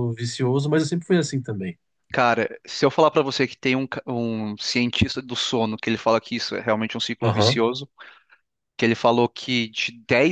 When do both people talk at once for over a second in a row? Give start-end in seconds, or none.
none